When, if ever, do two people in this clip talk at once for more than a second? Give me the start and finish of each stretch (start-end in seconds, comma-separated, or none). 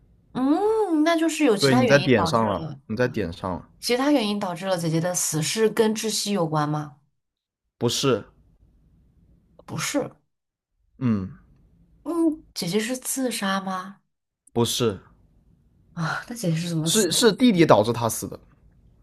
1.6-2.8